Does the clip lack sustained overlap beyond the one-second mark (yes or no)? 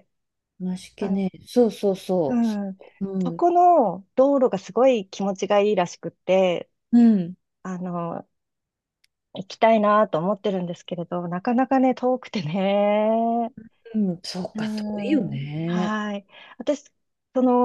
no